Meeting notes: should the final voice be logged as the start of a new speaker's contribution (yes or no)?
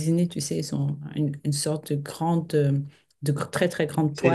yes